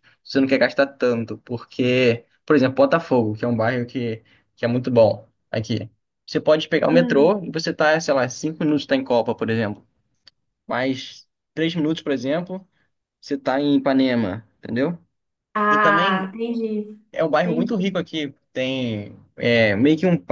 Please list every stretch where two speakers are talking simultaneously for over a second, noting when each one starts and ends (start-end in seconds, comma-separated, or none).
none